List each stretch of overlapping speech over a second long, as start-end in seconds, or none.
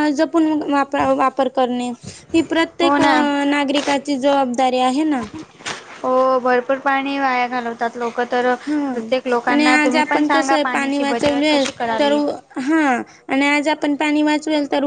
9.5-12.1